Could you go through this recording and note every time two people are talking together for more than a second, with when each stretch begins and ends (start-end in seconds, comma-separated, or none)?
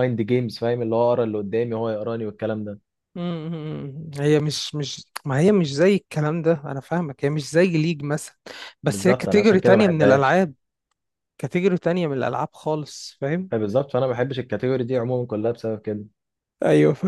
8.9-10.4